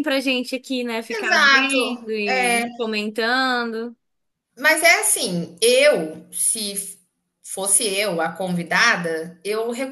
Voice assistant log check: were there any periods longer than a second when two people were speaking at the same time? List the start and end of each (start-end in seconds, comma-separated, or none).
1.1-2.7